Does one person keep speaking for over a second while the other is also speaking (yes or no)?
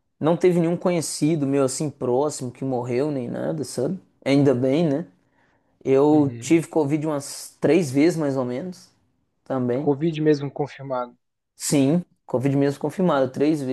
no